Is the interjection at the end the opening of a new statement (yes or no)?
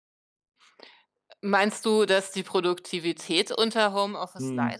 yes